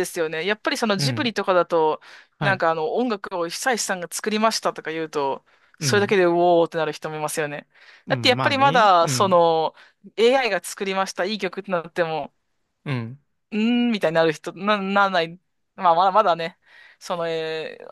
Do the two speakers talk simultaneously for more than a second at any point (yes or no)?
yes